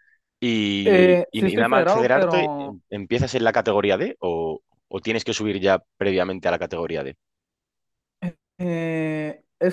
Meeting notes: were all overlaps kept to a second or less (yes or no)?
no